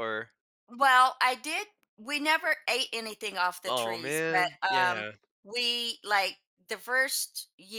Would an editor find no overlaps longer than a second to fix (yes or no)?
no